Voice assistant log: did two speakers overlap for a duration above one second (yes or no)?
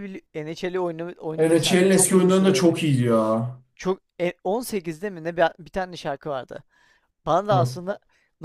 yes